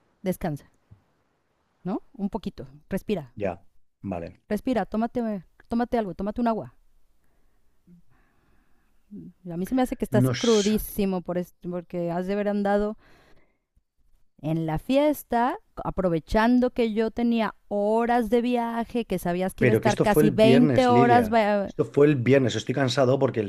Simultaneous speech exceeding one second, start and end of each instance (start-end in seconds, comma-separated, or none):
19.6-21.7